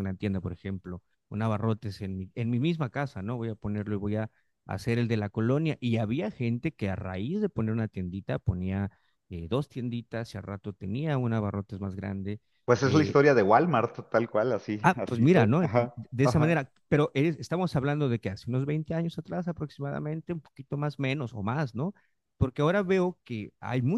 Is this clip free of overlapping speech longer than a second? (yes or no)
no